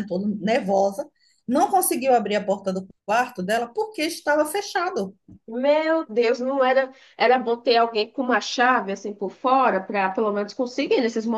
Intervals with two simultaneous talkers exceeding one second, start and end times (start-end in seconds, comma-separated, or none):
none